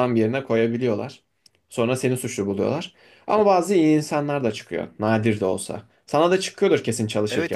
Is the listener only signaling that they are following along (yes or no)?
no